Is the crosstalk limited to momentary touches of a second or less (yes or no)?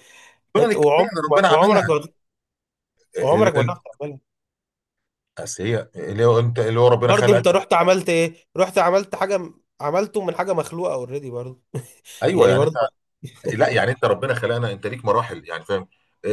no